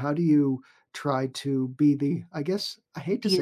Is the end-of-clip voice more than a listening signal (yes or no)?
no